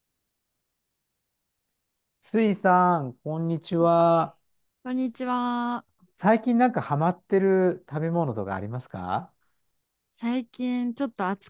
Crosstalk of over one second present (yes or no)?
no